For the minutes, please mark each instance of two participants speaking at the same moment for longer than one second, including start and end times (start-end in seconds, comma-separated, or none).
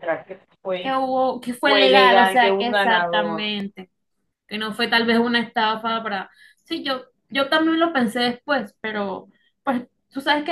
1.6-3.5